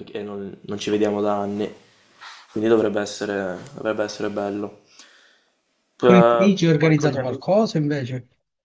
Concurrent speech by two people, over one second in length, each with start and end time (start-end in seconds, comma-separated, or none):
6.0-7.4